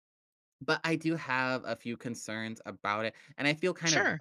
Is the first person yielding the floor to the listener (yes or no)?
no